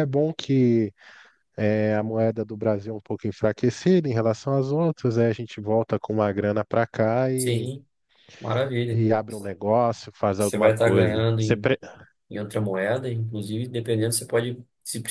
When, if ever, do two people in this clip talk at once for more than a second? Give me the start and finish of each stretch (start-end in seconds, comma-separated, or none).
10.4-11.7